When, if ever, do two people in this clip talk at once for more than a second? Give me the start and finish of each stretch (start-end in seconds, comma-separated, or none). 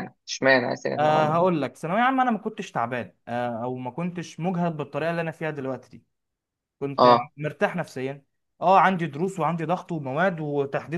none